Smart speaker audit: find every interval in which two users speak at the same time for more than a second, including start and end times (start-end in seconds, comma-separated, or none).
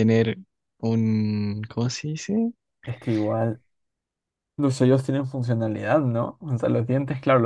none